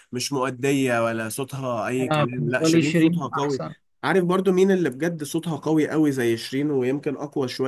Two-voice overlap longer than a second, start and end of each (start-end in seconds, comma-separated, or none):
2.0-3.6